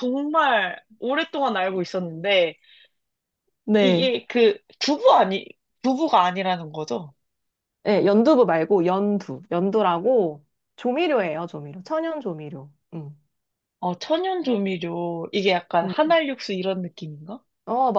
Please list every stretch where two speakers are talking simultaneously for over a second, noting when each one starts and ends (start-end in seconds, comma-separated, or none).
none